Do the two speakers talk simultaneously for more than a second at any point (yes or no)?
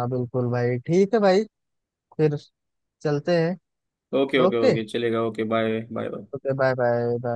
no